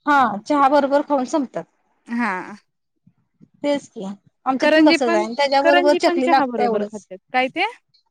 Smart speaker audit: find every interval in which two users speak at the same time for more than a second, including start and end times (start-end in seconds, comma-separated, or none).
5.6-7.0